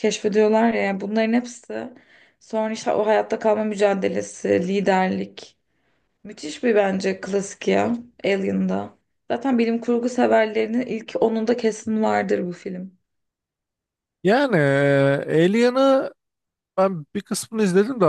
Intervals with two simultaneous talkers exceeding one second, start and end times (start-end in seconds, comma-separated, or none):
none